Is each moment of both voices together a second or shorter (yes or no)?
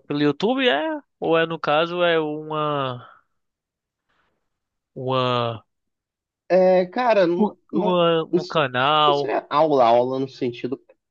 no